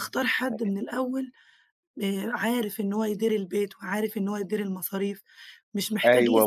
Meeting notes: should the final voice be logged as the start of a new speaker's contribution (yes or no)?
yes